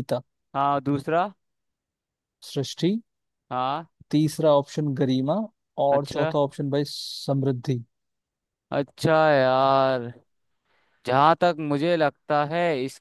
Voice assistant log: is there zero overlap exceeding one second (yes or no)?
yes